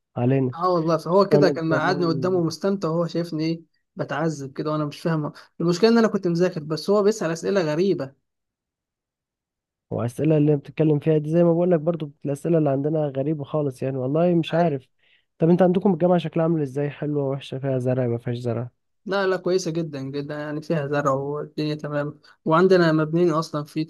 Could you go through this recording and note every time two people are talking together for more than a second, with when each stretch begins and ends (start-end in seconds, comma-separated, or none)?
1.1-2.4